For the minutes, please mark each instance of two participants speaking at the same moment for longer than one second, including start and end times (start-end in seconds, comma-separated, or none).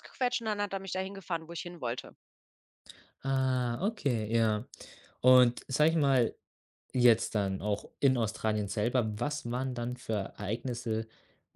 none